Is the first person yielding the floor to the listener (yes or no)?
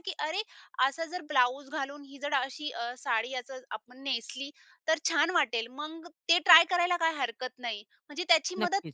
no